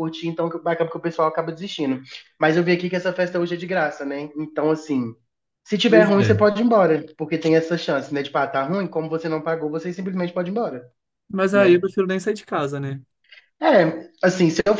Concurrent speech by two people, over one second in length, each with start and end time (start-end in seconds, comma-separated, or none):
none